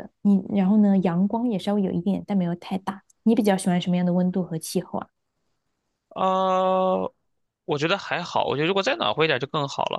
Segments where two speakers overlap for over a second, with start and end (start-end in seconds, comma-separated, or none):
none